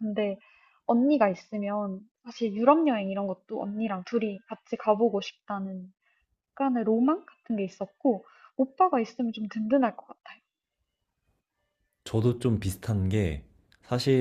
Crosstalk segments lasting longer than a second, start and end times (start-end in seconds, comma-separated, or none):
none